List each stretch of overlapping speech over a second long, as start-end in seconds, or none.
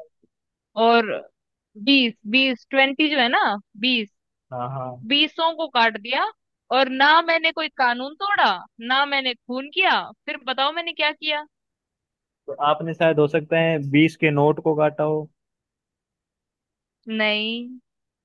none